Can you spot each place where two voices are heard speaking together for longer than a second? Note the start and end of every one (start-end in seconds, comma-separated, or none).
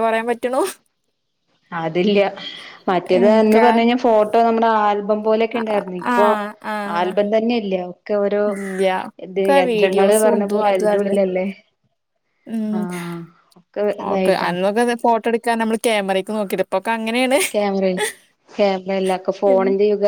9.4-11.2